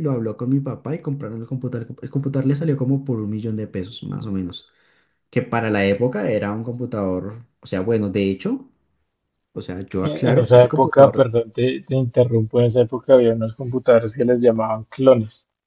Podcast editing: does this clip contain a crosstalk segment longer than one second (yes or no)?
yes